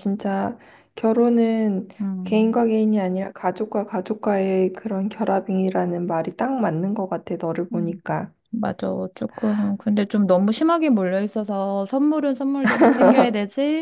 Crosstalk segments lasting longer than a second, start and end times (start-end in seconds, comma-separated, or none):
none